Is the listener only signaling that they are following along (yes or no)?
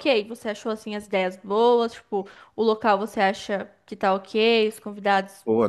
no